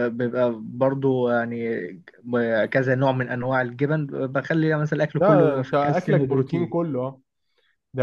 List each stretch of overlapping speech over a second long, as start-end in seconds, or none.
5.2-6.8